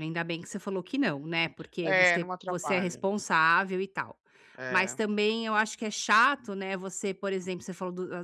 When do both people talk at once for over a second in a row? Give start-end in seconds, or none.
1.8-3.0